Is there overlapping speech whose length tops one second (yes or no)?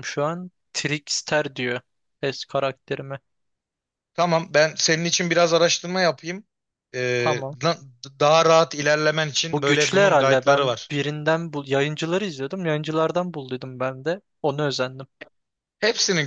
yes